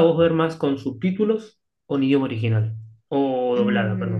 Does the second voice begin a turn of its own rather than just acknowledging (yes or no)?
yes